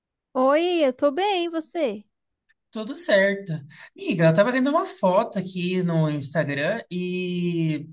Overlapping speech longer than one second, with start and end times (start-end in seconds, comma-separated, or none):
none